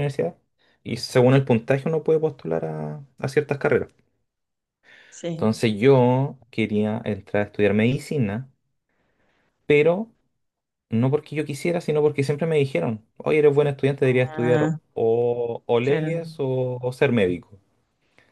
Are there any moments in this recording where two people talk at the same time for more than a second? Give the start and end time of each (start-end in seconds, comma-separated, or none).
none